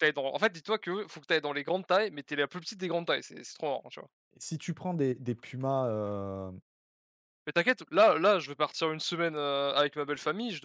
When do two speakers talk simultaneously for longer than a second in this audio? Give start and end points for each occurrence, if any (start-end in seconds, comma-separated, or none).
none